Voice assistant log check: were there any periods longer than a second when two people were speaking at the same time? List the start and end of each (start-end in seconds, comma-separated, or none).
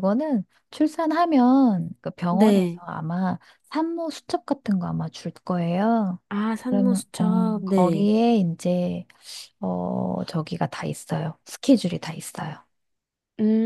6.7-8.1